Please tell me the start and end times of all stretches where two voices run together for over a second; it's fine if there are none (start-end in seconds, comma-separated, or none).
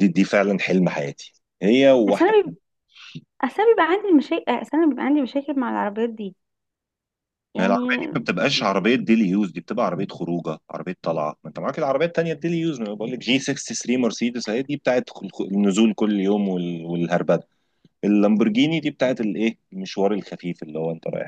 none